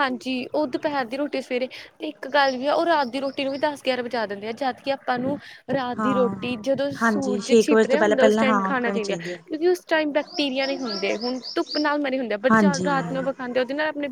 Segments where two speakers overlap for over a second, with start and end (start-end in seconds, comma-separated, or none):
7.0-9.4